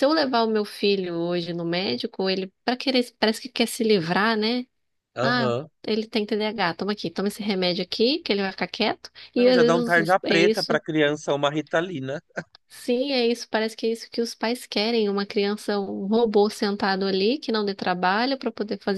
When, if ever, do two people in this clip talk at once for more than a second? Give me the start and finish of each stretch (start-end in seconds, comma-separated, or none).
9.3-10.8